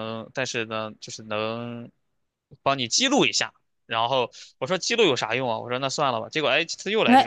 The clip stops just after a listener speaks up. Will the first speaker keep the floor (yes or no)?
no